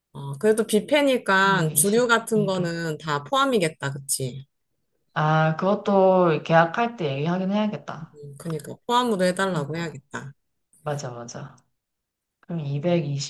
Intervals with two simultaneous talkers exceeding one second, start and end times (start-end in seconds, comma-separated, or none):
1.4-2.8